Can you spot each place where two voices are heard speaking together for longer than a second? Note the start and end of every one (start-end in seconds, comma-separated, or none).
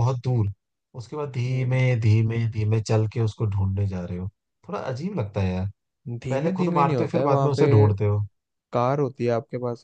6.3-7.7